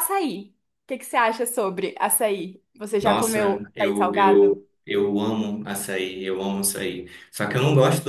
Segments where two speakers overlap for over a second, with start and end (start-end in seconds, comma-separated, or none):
3.0-4.6